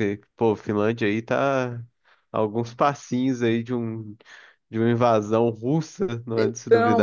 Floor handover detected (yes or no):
yes